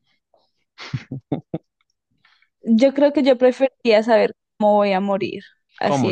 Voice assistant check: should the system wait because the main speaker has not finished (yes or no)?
yes